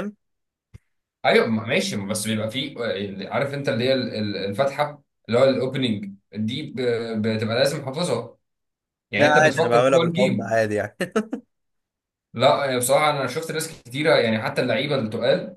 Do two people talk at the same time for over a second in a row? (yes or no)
yes